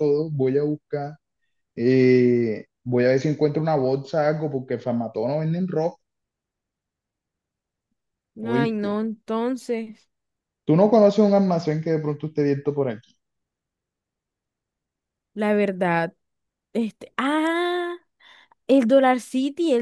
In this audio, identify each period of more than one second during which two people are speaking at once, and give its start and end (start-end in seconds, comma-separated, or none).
none